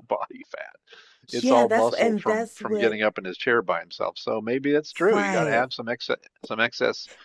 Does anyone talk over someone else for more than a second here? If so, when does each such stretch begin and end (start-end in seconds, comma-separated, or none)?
1.4-3.0